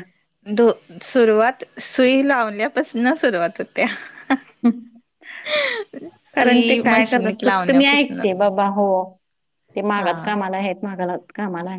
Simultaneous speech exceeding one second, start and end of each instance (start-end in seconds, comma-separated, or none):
6.4-8.2